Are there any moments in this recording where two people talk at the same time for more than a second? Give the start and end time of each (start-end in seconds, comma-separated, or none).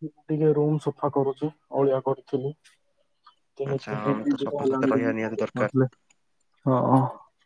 3.7-5.7